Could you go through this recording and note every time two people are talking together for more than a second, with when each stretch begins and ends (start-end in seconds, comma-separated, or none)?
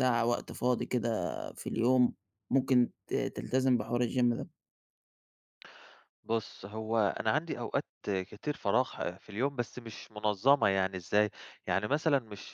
none